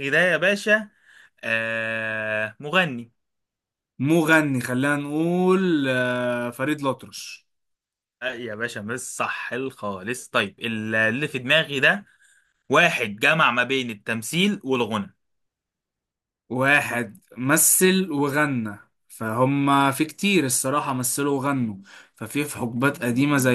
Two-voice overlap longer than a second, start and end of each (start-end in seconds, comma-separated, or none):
none